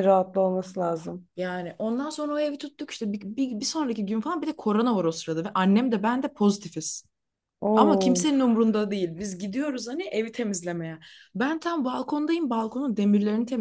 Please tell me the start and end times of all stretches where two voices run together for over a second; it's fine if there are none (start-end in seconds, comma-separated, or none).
none